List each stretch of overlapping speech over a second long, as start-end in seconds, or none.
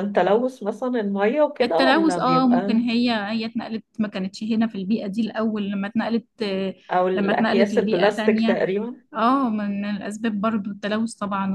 1.6-2.8, 7.2-8.6